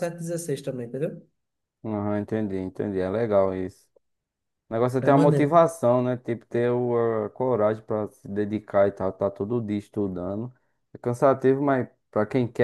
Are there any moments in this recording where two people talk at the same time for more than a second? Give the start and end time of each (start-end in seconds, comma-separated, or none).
none